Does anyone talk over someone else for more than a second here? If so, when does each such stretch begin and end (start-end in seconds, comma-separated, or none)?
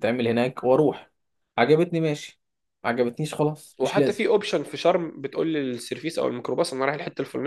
none